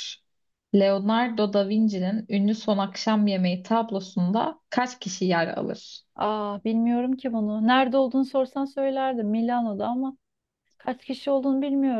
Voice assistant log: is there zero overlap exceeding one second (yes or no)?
yes